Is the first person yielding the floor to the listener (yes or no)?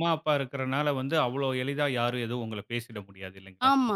yes